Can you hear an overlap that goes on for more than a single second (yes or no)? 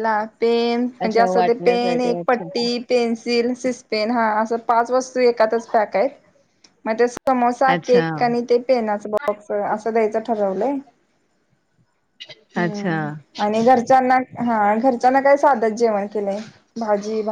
yes